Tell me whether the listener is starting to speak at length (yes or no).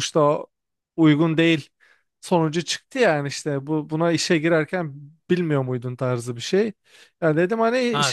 yes